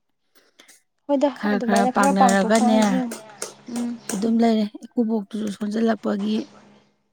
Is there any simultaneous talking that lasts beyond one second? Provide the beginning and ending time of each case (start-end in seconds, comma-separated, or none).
1.4-2.8